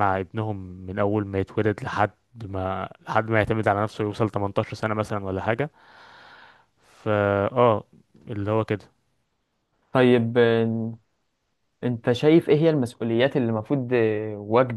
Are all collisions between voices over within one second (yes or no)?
yes